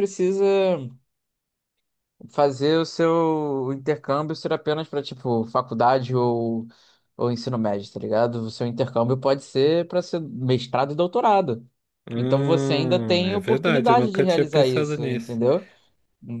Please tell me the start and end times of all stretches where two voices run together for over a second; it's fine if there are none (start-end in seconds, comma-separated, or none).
12.2-15.4